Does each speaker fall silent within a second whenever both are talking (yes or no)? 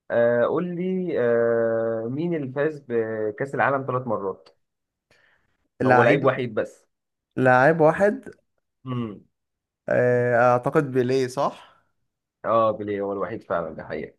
yes